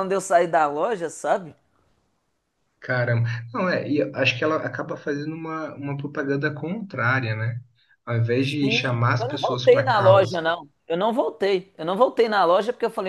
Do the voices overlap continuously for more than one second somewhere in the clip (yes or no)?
yes